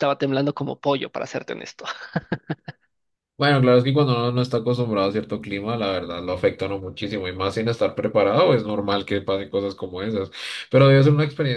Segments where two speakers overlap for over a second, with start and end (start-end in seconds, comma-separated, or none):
none